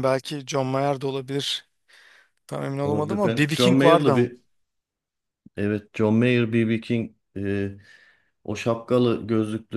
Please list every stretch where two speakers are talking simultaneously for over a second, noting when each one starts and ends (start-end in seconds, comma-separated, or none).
2.8-4.3